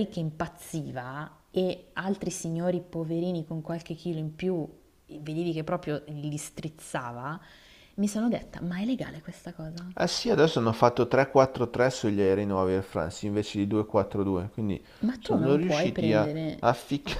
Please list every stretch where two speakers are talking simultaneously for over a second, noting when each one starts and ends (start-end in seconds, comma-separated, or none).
15.2-16.6